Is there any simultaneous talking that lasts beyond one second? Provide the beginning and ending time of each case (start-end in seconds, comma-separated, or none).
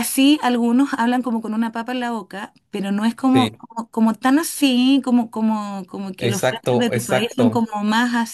6.2-7.6